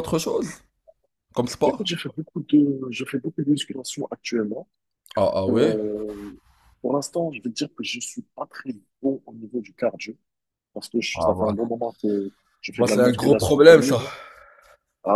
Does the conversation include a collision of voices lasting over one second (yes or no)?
yes